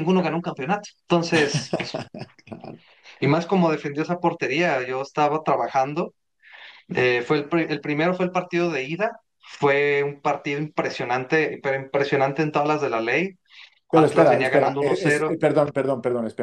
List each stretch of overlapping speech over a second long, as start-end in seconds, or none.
13.9-15.4